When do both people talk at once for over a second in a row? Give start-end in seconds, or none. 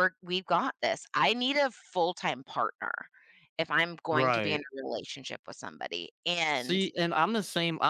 none